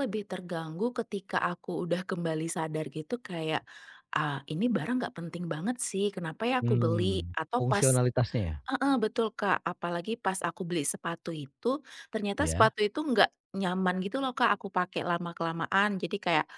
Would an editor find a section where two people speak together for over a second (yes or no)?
yes